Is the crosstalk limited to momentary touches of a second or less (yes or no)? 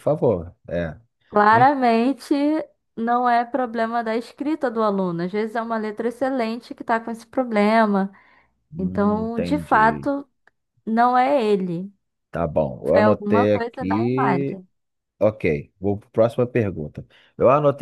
no